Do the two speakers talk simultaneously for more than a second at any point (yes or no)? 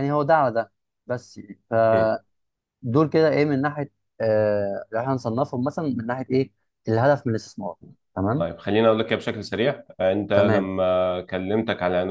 no